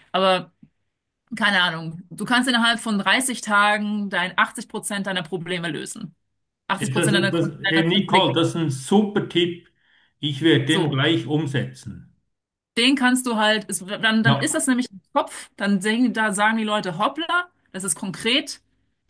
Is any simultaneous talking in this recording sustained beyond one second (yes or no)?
yes